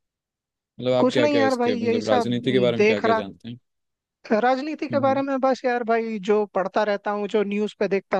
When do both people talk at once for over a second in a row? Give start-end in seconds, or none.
1.0-3.2